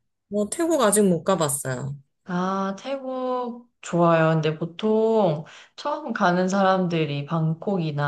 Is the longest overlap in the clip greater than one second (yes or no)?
no